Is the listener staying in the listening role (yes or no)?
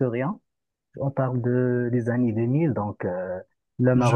yes